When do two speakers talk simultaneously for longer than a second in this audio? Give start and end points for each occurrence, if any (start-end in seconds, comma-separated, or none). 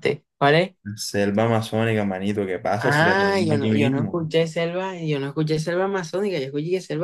2.8-4.1